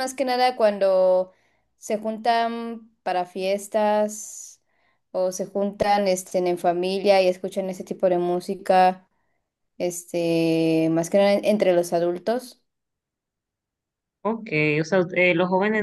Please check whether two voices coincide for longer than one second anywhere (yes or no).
no